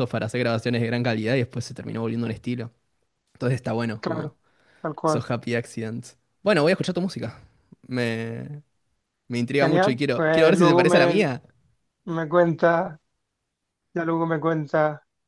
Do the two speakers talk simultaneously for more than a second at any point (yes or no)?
yes